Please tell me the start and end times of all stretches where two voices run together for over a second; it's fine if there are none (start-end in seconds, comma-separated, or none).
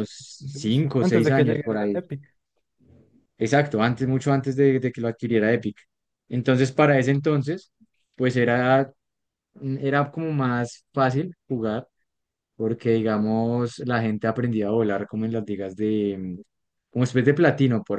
0.5-2.0